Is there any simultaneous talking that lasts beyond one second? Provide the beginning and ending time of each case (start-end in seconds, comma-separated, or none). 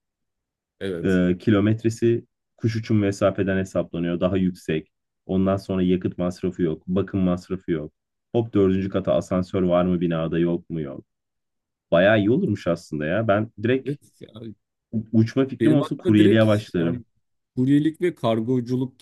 15.6-17.0